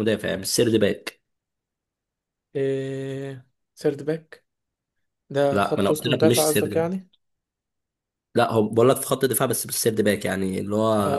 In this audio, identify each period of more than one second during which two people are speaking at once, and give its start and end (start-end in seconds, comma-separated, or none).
5.5-7.0